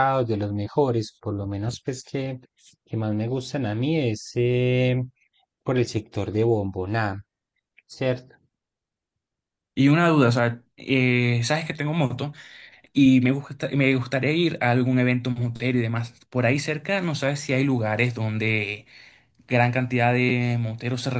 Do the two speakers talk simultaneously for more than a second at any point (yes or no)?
no